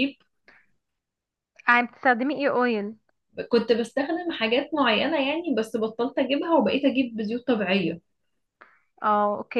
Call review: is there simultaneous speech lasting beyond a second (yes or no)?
no